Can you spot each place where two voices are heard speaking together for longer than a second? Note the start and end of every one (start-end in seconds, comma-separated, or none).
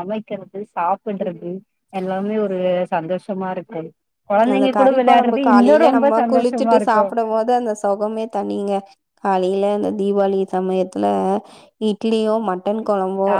4.5-7.0